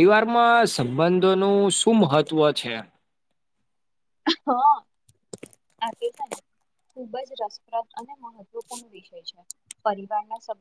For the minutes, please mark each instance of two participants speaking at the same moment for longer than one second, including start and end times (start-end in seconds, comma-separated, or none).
none